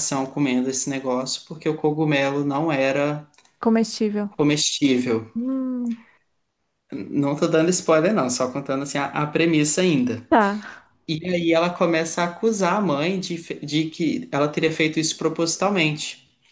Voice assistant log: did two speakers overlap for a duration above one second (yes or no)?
no